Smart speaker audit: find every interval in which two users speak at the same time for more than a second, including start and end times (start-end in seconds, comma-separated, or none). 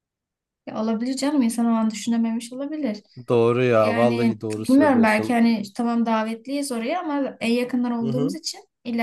3.8-5.4